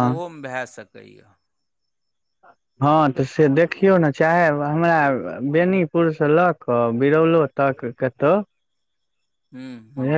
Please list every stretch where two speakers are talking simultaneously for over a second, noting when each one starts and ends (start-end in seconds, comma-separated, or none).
none